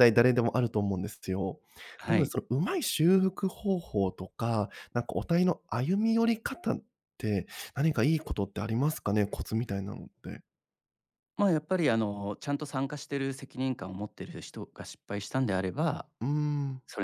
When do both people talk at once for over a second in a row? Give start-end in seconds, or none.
none